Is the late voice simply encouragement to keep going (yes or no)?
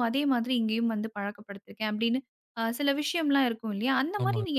yes